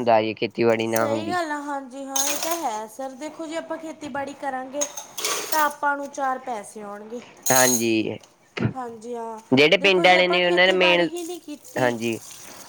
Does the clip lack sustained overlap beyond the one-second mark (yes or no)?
no